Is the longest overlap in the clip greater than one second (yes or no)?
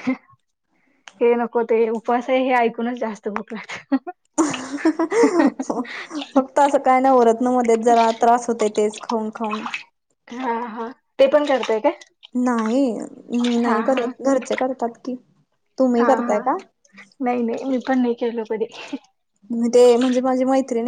no